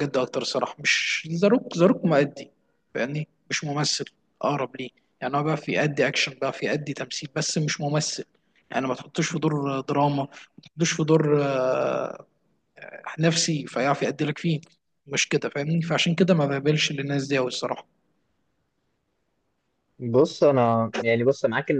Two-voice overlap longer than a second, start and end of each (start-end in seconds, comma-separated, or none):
none